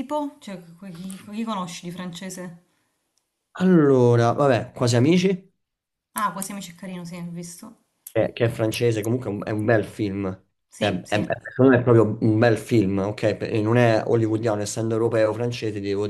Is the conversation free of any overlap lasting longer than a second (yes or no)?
yes